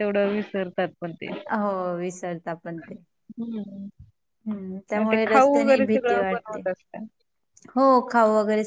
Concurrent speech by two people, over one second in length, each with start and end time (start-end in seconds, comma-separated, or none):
5.1-6.6